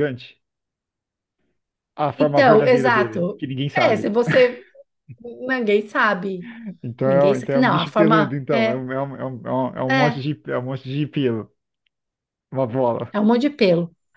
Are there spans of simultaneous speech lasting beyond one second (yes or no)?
yes